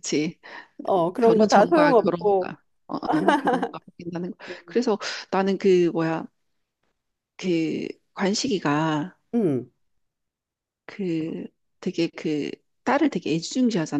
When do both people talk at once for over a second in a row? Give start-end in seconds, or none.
1.2-2.6